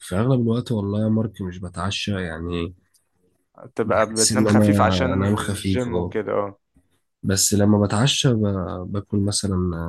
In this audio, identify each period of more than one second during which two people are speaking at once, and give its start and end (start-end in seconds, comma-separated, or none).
3.8-6.1